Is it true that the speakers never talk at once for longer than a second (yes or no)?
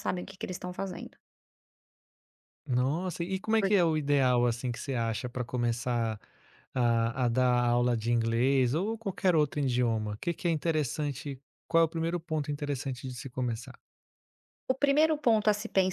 yes